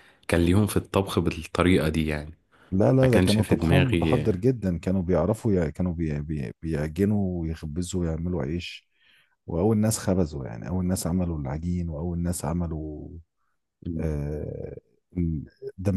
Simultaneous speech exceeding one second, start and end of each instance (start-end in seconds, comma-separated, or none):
3.0-4.3